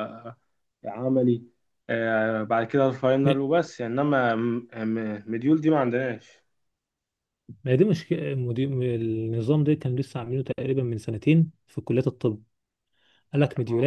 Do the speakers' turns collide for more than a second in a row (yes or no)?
no